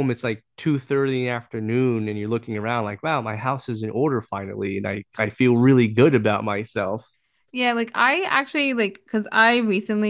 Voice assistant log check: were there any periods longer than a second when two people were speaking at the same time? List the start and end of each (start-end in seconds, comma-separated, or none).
none